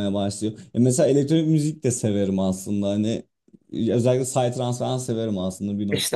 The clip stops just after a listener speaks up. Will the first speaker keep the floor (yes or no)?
no